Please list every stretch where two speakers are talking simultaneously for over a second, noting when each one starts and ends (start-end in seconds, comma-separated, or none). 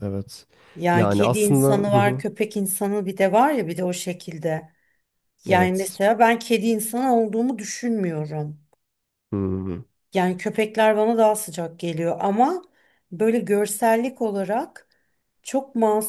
0.9-2.2